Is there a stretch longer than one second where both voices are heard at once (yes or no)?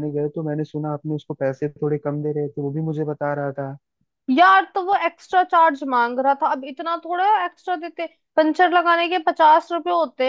no